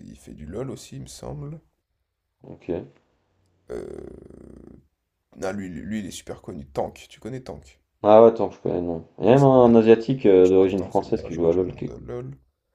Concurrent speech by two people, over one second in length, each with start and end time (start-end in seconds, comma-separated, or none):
10.4-12.1